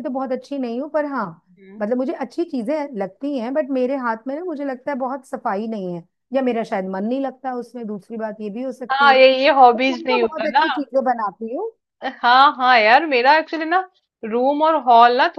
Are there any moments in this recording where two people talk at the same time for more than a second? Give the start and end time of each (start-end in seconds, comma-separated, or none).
8.9-10.7